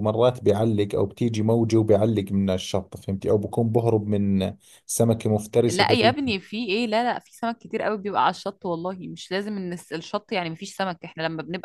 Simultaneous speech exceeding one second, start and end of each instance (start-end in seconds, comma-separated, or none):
none